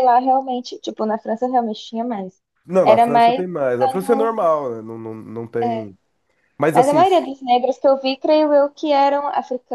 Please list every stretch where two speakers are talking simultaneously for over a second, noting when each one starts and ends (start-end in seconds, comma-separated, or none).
2.8-4.4